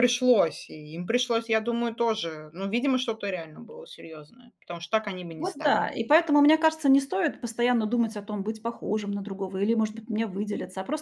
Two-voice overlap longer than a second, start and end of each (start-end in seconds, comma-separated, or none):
none